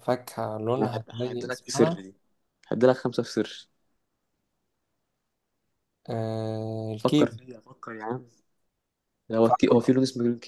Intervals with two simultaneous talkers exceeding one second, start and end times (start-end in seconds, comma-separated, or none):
0.8-2.0